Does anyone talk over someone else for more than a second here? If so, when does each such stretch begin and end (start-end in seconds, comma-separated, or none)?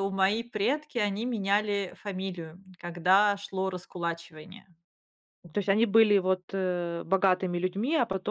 none